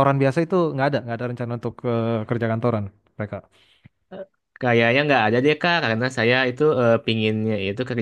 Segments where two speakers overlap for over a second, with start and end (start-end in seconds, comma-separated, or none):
none